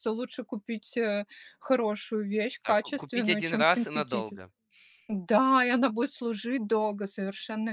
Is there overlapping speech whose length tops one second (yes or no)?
yes